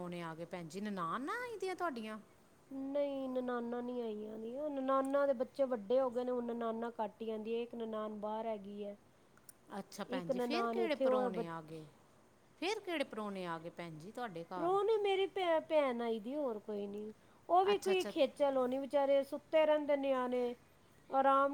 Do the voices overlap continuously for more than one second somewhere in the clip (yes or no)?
yes